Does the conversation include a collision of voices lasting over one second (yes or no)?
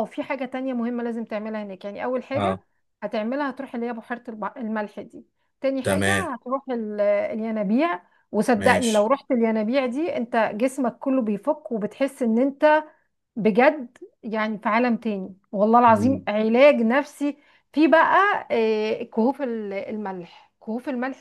no